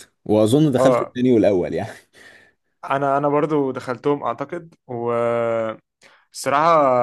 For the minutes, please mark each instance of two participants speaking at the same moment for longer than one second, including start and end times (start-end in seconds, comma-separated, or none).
none